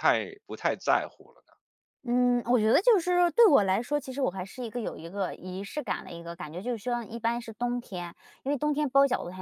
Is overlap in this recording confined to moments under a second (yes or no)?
yes